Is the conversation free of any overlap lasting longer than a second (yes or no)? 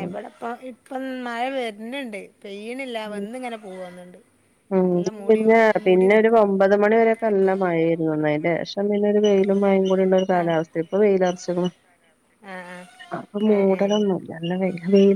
yes